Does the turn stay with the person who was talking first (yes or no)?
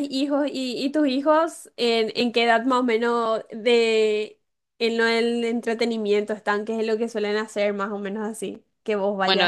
no